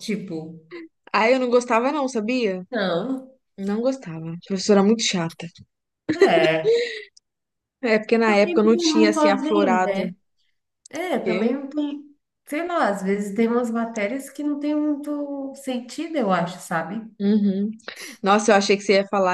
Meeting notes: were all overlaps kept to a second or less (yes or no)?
no